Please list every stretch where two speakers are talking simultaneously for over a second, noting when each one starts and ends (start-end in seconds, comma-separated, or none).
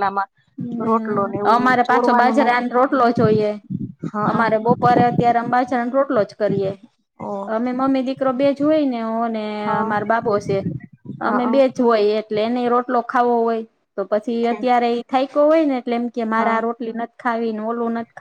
0.9-2.6